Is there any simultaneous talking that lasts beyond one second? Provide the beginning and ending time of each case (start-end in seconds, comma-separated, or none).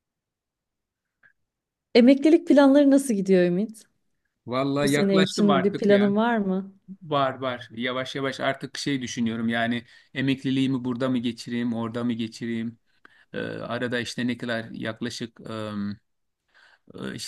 4.8-6.1